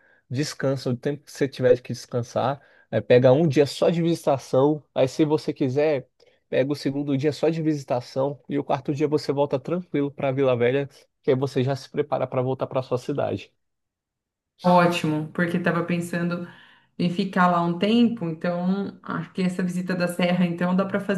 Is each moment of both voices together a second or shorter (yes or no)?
yes